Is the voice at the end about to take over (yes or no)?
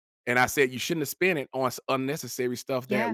no